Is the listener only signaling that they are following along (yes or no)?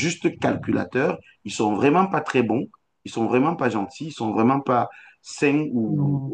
yes